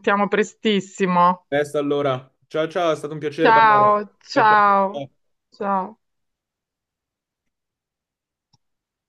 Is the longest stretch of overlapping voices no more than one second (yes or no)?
no